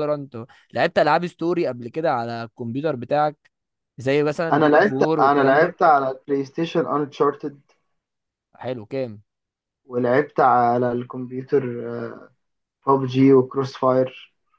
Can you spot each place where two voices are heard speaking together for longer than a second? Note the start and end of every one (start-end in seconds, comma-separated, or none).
4.5-5.8